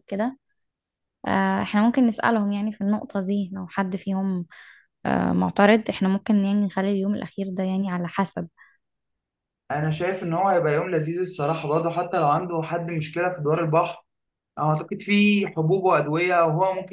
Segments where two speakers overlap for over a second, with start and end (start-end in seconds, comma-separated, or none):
none